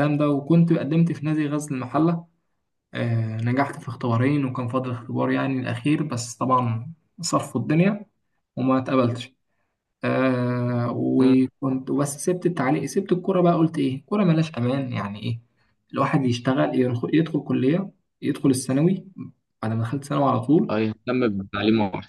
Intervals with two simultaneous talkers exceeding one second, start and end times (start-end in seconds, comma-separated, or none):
none